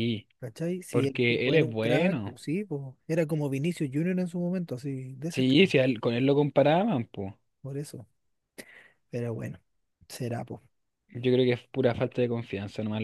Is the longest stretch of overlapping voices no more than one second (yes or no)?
no